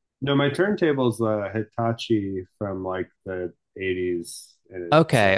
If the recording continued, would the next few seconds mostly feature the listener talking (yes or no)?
yes